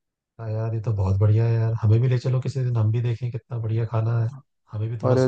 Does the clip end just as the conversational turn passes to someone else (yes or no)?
yes